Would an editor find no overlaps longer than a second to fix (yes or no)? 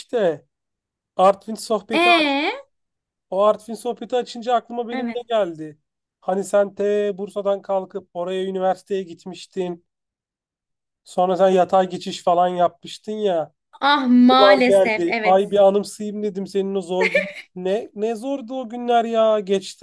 no